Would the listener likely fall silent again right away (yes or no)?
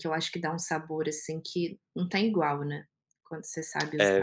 no